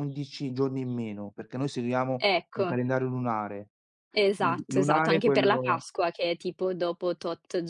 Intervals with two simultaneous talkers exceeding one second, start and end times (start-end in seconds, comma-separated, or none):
4.4-5.8